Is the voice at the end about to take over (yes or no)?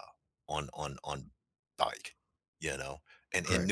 no